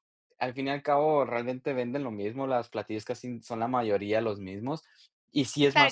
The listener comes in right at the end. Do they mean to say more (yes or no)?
yes